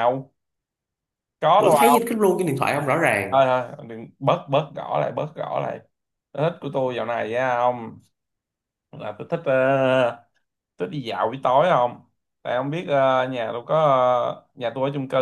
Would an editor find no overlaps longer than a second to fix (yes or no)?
yes